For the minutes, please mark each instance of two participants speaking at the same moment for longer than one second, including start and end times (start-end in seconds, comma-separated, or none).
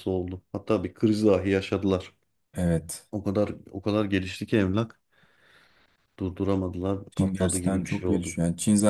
7.2-8.4